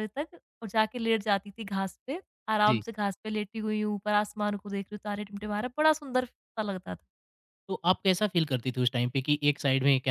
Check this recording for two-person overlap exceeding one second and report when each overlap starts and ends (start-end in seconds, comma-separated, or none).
none